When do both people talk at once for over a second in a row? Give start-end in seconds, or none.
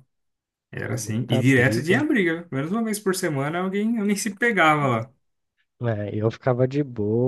0.8-2.0